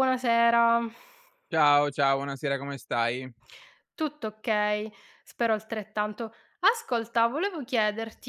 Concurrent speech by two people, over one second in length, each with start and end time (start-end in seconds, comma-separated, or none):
none